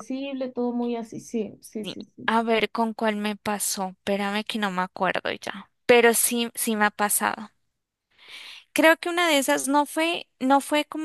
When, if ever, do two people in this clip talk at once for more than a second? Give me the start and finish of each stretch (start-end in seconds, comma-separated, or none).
none